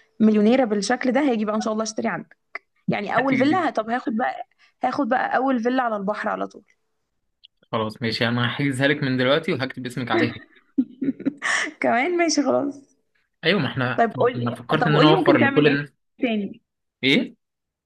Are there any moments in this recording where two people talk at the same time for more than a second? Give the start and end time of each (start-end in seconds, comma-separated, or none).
14.0-15.8